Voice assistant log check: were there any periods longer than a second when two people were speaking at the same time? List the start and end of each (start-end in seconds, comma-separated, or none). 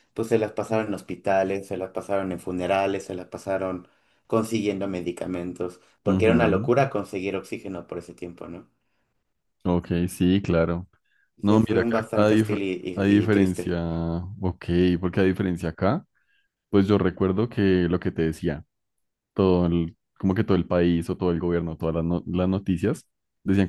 11.4-13.8